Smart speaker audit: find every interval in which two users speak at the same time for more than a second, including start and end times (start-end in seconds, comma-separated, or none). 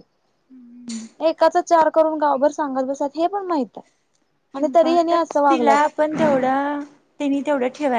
4.6-5.8